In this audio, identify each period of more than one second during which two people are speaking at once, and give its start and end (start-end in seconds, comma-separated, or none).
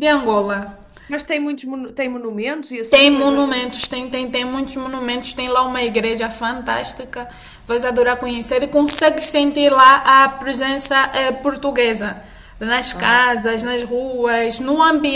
none